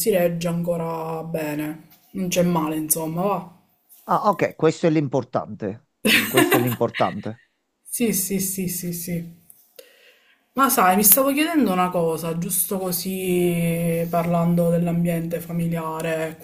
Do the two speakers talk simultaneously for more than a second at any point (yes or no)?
no